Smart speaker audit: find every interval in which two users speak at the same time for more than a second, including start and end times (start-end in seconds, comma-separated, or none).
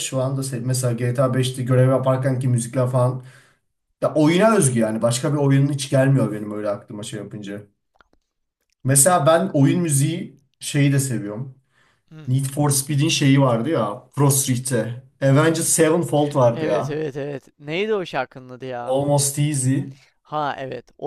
none